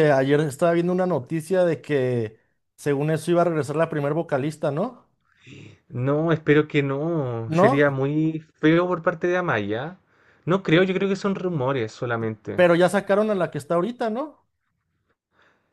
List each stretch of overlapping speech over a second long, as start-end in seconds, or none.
none